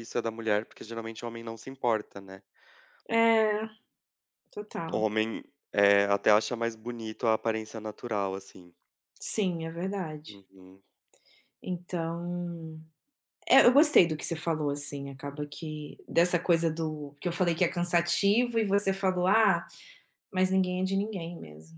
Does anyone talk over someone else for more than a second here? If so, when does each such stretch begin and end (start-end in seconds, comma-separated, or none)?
none